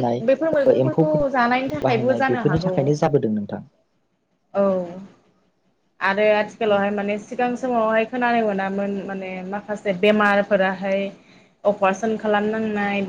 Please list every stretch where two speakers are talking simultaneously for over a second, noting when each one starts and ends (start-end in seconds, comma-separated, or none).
0.8-2.7